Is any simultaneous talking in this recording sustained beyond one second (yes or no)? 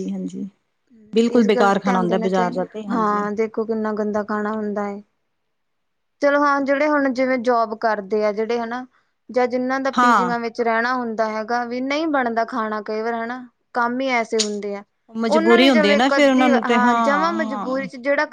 yes